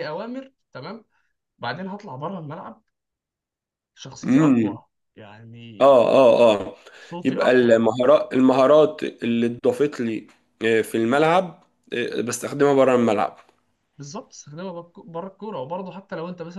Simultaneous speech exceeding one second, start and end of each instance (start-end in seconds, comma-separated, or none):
none